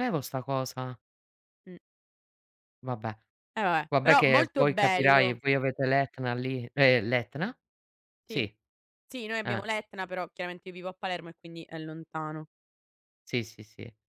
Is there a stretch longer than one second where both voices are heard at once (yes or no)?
yes